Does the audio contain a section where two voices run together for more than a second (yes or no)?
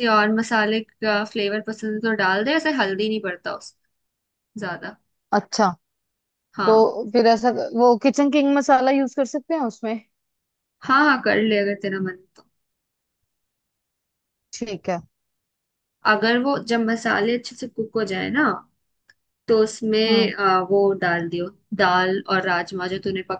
no